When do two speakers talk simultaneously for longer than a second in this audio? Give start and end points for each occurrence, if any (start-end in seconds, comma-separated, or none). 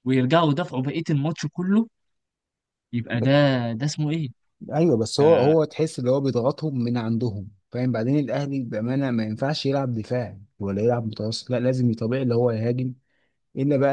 none